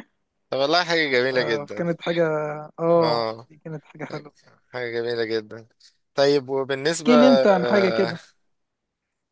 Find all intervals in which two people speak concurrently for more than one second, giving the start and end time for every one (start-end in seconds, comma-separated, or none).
none